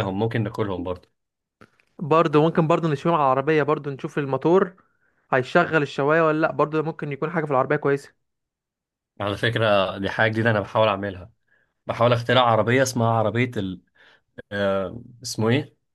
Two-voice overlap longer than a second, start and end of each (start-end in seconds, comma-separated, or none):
none